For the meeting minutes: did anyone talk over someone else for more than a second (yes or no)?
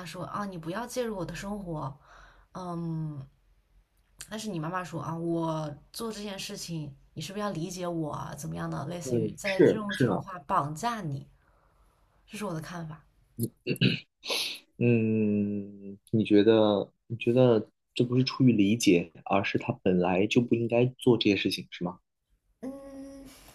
yes